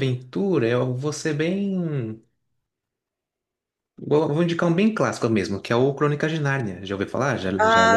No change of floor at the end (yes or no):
no